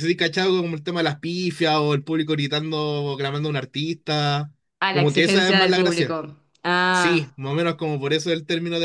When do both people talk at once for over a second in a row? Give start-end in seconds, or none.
4.9-6.2